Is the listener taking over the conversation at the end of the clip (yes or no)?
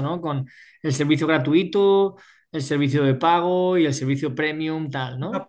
yes